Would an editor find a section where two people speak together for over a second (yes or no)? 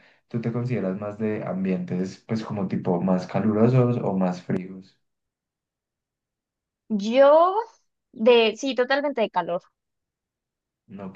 no